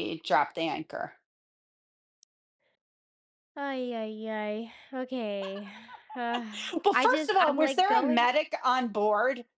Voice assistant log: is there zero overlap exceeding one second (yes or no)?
no